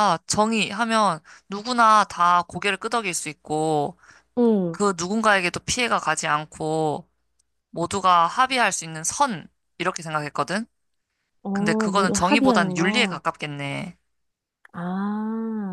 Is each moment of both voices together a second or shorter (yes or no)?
no